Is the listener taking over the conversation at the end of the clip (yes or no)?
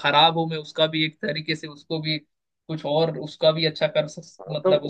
yes